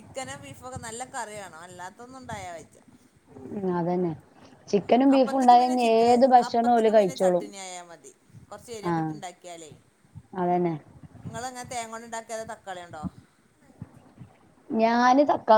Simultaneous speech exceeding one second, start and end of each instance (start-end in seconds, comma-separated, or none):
4.8-7.5